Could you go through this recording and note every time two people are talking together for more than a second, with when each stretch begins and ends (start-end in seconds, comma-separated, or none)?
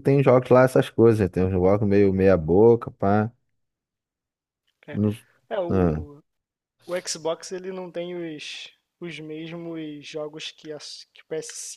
none